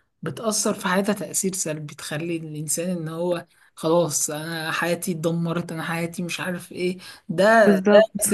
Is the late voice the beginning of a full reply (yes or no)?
no